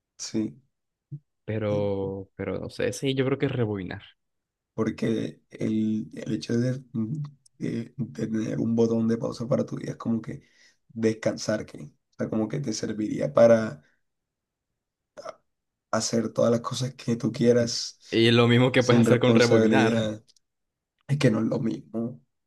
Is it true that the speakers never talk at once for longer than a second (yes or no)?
no